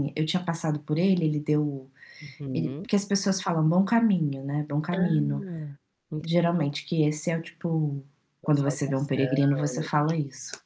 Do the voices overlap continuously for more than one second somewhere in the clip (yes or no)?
yes